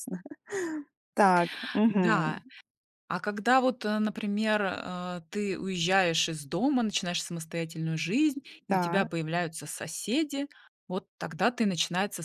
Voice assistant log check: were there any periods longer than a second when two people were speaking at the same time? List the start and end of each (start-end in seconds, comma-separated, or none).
none